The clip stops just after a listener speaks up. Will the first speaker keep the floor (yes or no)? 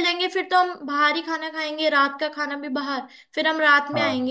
yes